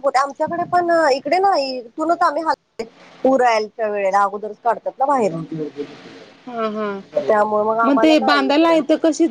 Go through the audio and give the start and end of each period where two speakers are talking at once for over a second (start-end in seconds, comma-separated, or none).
none